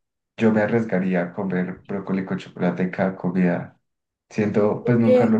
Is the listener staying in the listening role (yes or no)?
yes